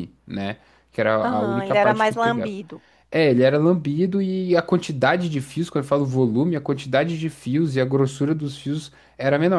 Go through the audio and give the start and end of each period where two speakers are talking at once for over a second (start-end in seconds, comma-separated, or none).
1.2-2.5